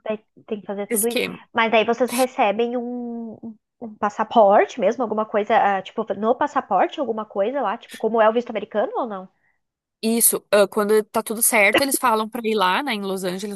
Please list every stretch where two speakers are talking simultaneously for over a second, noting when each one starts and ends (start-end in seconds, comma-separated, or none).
none